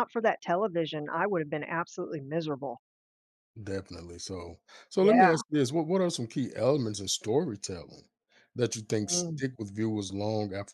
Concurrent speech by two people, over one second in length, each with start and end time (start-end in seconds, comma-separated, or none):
none